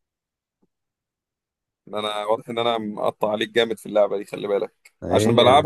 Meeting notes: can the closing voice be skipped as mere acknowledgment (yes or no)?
yes